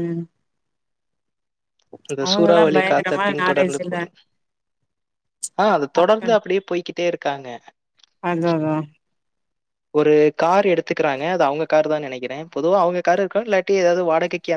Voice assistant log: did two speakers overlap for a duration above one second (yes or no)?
yes